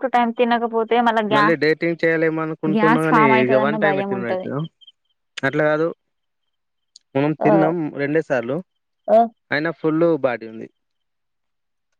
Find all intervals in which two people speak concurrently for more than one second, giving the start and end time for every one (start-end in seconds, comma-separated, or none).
2.7-4.5